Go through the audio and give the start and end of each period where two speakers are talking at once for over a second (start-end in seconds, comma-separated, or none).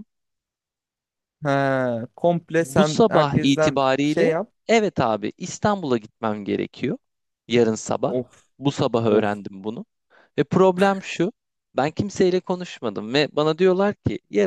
2.6-4.5